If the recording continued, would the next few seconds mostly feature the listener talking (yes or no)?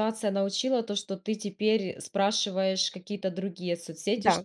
no